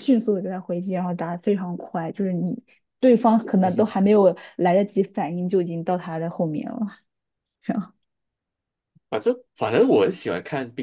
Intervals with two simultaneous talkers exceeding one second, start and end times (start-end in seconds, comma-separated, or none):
none